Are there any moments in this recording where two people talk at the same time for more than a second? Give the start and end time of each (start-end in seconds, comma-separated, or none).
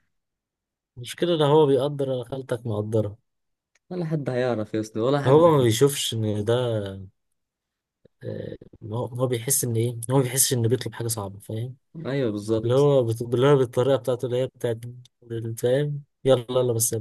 none